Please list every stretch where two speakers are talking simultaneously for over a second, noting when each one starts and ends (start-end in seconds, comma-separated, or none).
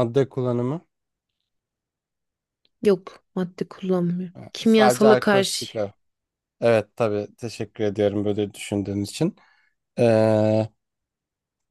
4.4-5.7